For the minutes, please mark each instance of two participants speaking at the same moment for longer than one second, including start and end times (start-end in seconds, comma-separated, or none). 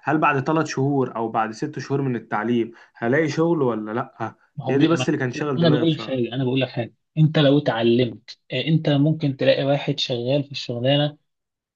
4.5-6.2